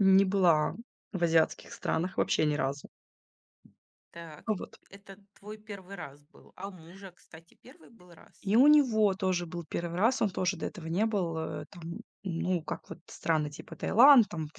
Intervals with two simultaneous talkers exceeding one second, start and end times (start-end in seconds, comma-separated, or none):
none